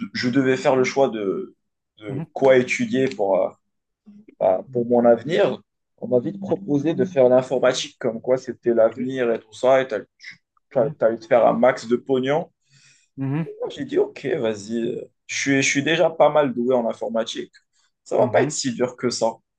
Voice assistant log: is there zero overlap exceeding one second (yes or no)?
yes